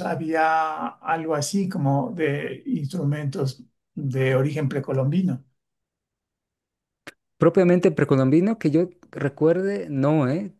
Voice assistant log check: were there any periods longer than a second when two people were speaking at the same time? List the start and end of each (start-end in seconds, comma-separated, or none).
none